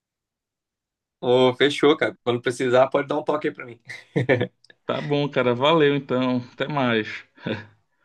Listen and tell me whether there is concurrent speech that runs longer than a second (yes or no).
no